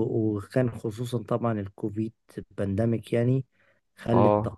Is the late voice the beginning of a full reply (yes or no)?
no